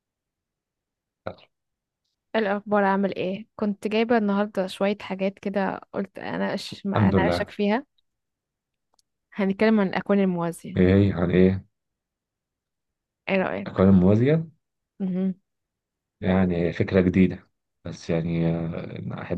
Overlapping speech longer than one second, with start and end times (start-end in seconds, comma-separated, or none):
none